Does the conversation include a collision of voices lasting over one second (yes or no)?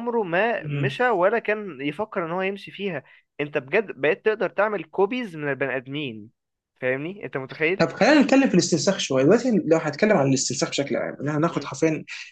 no